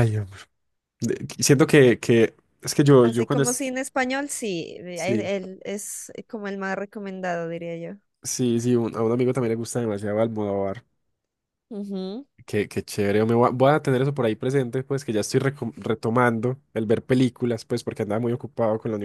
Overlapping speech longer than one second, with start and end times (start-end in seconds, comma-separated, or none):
none